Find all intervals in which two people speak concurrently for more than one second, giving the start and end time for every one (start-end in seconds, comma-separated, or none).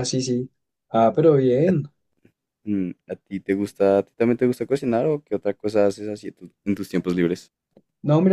none